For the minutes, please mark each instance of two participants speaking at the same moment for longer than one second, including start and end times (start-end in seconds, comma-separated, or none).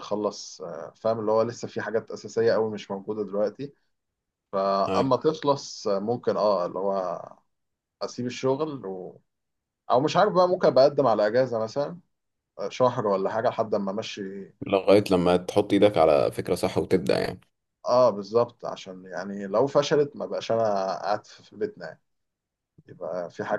none